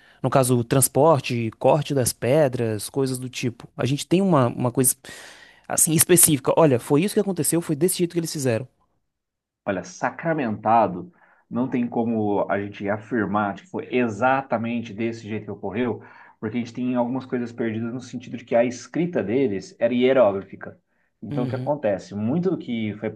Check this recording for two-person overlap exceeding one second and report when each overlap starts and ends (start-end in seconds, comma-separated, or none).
none